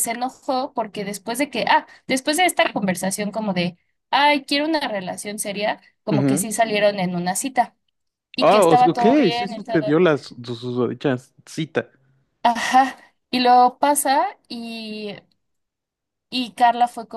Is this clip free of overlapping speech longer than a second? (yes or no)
no